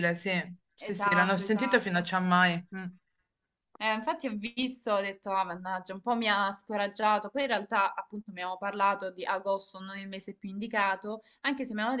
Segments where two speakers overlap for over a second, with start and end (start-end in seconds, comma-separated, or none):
0.8-2.1